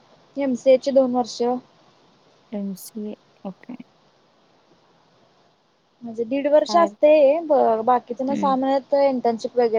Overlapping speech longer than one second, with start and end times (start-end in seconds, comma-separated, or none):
none